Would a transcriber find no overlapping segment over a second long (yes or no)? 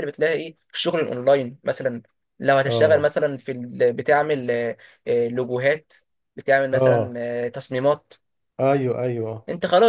yes